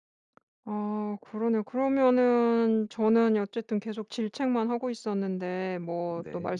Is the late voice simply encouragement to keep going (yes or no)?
yes